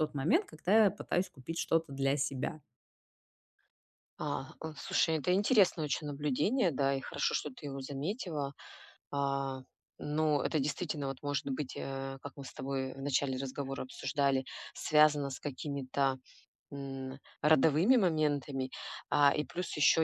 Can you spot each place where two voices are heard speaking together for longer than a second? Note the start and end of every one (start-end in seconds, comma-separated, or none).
none